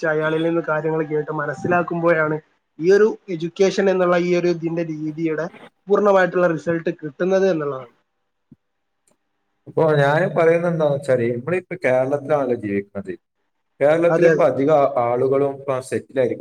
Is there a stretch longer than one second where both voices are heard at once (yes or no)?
no